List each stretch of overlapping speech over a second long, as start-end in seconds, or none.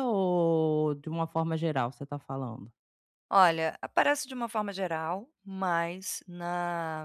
none